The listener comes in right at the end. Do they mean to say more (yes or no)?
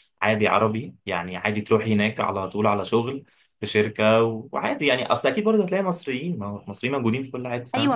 yes